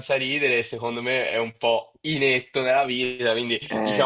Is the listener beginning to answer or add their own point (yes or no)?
no